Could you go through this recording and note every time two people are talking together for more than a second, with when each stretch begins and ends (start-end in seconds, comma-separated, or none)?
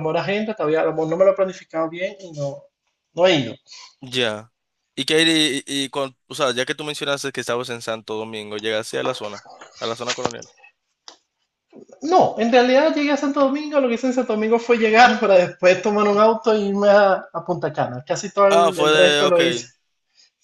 18.5-19.7